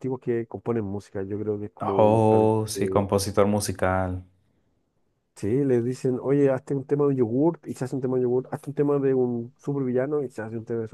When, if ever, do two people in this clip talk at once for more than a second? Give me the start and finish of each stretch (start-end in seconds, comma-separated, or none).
1.8-3.0